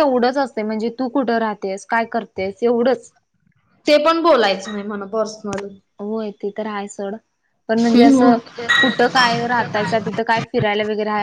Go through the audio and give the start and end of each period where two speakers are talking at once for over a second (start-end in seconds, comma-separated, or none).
none